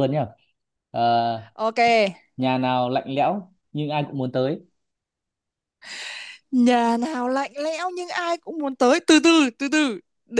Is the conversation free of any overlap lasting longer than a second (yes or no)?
yes